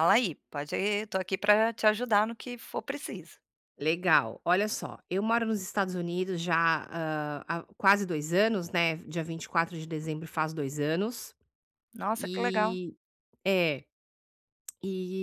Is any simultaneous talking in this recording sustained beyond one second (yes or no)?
no